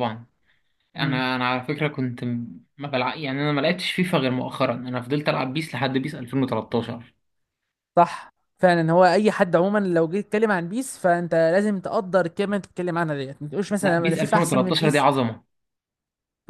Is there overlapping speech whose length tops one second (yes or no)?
yes